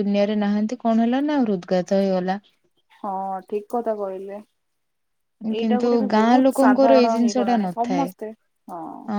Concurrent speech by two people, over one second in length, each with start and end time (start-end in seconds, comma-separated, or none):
5.6-8.1